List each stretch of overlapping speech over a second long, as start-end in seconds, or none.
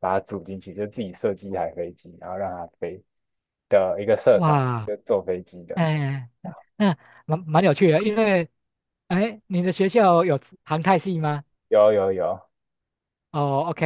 none